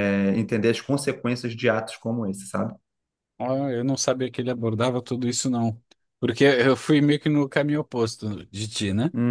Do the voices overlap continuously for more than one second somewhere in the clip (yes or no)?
no